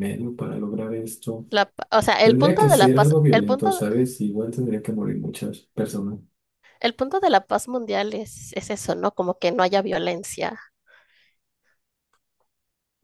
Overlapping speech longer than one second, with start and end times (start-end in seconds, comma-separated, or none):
2.2-3.8